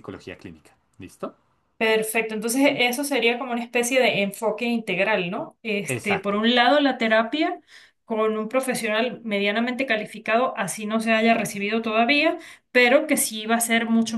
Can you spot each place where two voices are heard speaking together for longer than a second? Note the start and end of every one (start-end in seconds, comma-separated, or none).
none